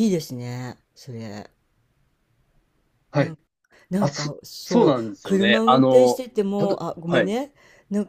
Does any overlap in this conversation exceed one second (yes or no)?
yes